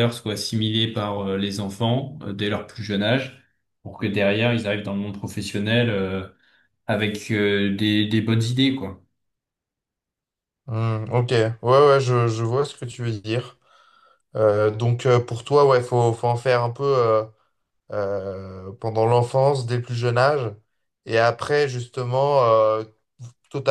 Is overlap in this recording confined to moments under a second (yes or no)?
yes